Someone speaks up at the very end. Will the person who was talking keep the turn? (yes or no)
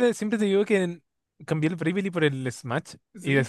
yes